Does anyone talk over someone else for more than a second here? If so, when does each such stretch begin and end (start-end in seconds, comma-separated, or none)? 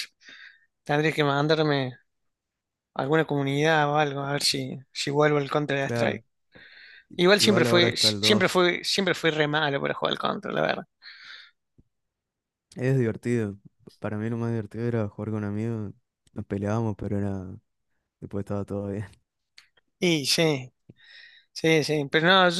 7.2-8.7